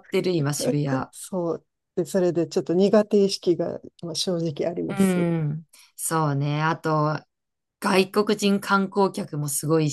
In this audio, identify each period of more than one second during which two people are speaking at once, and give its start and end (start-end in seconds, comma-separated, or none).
none